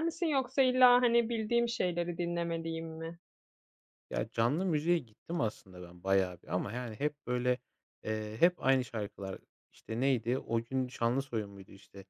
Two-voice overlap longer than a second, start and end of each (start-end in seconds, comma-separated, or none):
none